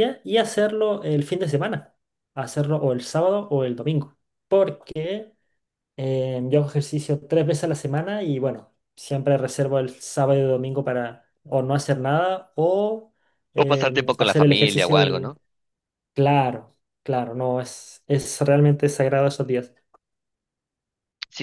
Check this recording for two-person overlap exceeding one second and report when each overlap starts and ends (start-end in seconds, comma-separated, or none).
13.6-15.3